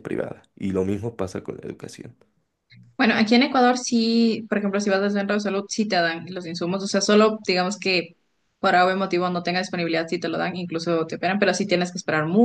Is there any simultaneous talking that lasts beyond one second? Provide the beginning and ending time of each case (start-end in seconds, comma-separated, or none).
none